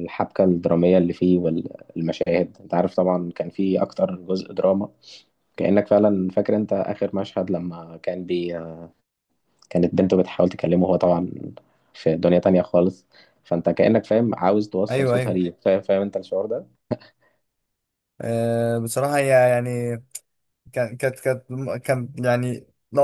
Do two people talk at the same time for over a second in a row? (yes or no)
no